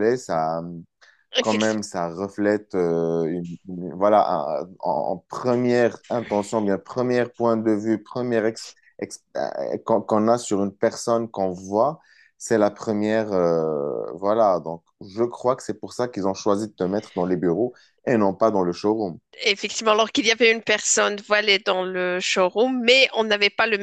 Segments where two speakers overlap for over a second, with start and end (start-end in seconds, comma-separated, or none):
none